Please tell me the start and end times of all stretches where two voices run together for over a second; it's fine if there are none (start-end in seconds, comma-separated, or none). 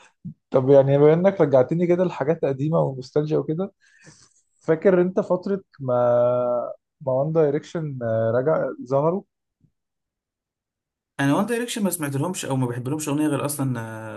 none